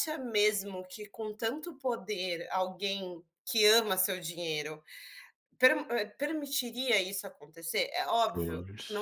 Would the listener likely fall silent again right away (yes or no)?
yes